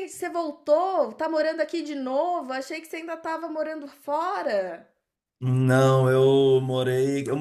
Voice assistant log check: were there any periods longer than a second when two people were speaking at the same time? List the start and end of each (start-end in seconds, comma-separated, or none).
none